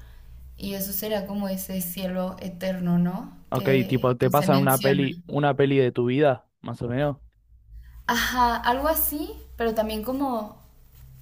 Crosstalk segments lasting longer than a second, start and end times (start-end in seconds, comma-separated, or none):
3.5-5.1